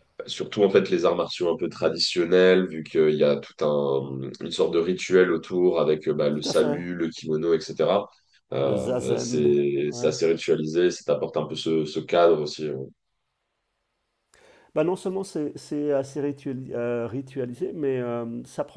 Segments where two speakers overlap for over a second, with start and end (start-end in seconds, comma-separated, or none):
8.6-10.1